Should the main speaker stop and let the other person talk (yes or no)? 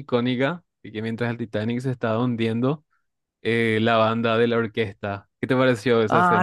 yes